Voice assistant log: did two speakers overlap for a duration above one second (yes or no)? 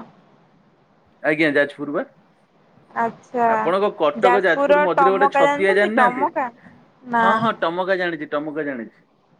yes